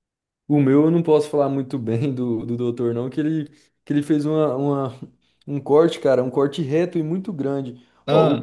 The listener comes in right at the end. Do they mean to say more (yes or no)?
no